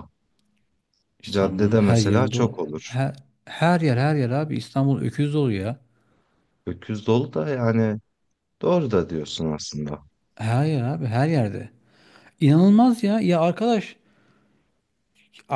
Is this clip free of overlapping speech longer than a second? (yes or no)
no